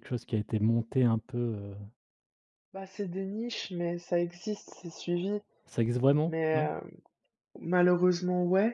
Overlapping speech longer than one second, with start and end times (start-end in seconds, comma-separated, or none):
none